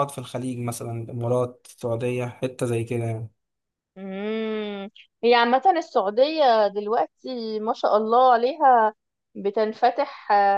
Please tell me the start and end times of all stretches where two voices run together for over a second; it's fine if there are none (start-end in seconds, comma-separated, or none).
none